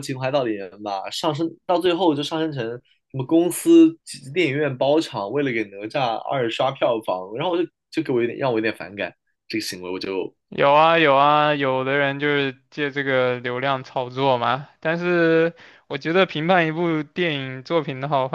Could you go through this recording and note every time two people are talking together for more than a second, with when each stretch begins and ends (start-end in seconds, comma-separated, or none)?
none